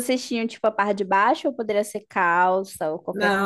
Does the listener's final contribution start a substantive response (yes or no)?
yes